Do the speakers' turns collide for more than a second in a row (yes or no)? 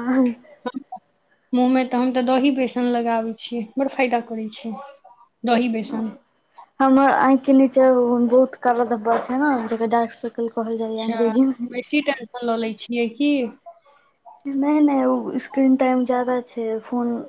no